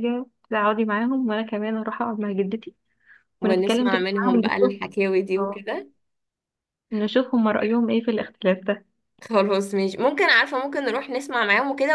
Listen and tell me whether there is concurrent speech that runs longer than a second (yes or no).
yes